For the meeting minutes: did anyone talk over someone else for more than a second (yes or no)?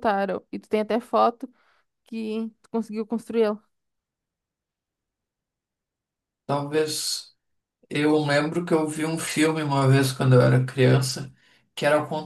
no